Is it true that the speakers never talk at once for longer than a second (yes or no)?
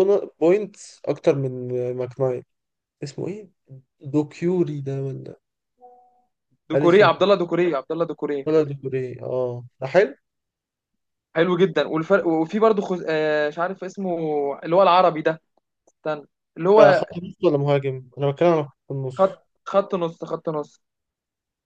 yes